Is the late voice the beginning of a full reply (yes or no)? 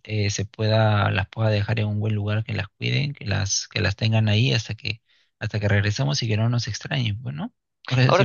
yes